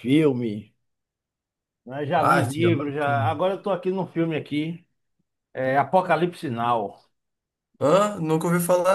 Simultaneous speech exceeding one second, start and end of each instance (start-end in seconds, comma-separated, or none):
2.2-3.4